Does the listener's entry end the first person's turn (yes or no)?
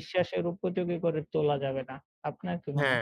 yes